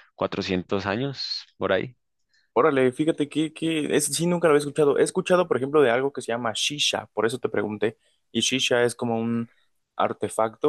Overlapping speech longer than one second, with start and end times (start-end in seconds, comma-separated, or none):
none